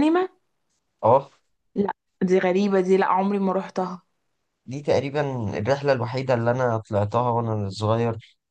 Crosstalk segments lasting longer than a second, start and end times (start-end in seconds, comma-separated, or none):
none